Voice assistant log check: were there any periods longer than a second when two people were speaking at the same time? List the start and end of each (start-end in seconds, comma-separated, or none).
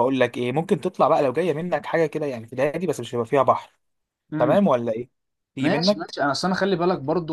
none